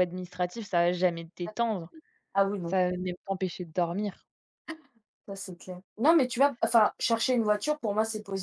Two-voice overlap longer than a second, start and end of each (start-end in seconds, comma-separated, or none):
none